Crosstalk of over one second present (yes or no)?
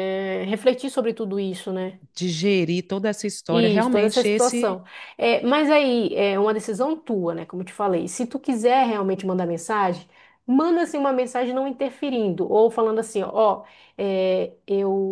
yes